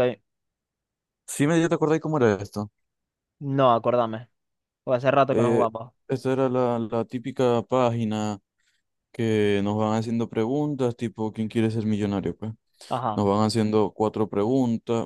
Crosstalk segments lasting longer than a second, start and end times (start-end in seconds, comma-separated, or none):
none